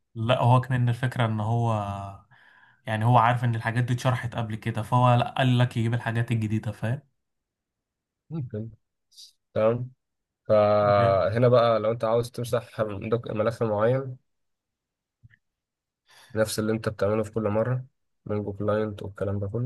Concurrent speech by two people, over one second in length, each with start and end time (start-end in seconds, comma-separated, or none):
none